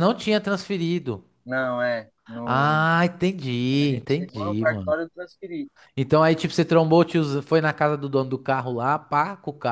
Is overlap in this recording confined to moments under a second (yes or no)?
no